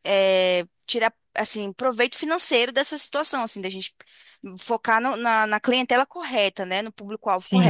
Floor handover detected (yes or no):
yes